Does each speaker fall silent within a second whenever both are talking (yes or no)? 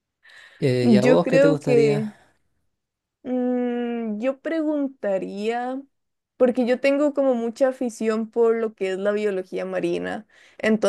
no